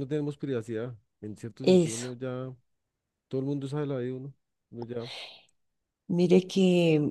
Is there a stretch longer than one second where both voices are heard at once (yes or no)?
no